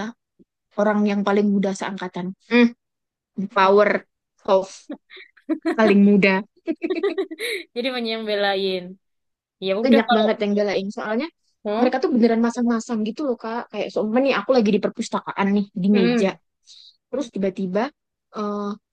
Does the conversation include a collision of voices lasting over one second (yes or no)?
no